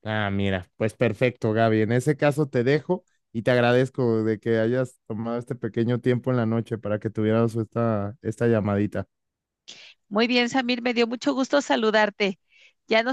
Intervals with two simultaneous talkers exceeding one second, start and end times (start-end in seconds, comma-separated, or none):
none